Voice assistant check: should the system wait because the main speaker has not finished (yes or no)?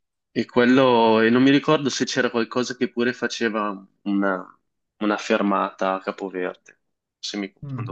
no